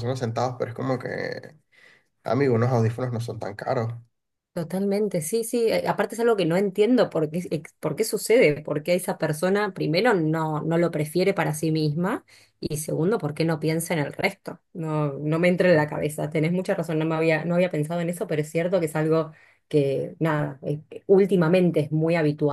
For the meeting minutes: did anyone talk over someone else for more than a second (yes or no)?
no